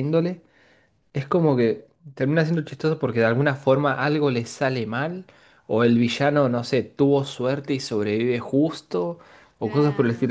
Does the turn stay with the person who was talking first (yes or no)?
no